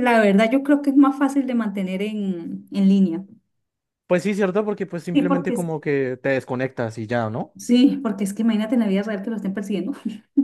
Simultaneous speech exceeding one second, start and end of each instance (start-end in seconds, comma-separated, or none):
none